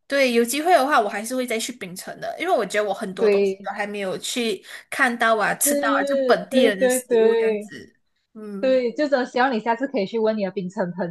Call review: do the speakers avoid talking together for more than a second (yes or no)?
no